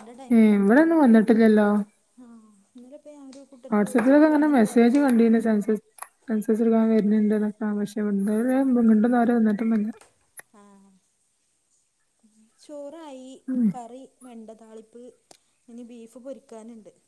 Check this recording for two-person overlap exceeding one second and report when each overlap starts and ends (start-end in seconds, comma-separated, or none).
3.7-5.0